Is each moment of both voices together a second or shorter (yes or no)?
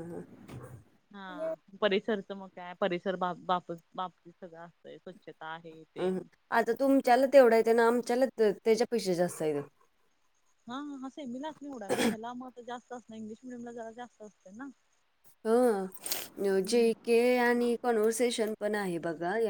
yes